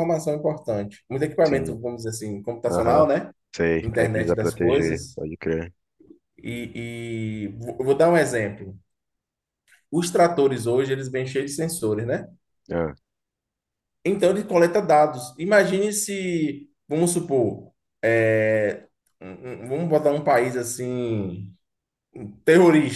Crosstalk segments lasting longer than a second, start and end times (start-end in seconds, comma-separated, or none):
3.8-5.2